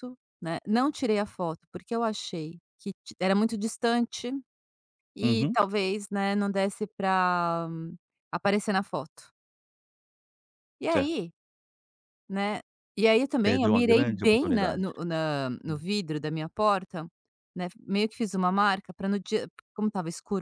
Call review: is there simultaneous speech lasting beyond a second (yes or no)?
yes